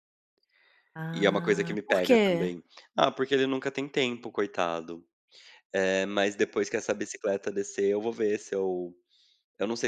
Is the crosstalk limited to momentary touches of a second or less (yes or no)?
no